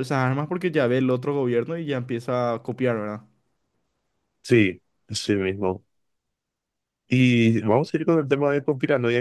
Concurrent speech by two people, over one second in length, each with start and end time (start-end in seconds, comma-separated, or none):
none